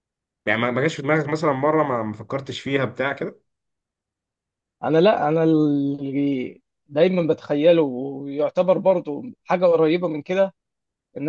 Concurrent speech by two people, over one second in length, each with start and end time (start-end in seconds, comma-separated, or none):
none